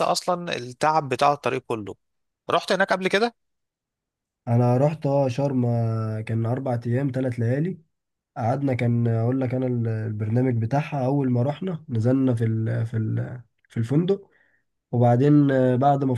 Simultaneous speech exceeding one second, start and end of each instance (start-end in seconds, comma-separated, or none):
none